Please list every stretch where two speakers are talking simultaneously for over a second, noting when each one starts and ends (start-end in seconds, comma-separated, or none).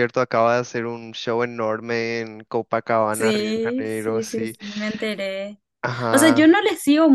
3.1-4.5